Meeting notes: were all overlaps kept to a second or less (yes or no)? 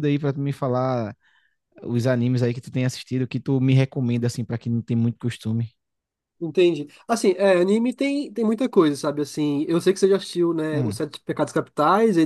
yes